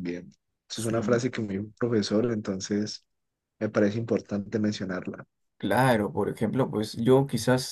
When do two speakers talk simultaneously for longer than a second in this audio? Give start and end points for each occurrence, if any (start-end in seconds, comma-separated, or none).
none